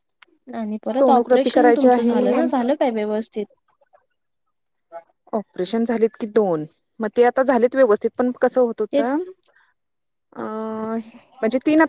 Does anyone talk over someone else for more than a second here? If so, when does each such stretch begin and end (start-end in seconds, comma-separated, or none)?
0.9-2.3